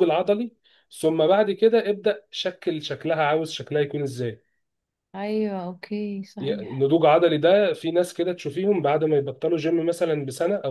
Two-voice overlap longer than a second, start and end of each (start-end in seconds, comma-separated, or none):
none